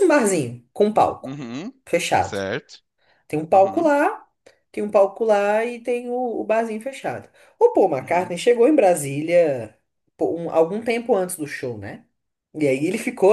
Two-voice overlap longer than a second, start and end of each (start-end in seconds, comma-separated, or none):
none